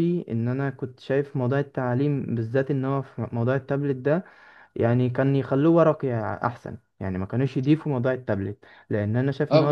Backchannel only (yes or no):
yes